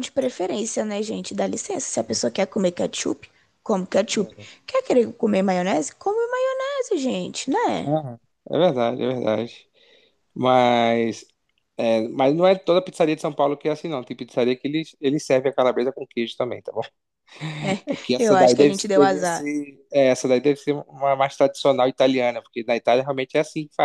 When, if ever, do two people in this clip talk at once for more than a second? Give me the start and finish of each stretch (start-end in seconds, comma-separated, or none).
17.9-19.5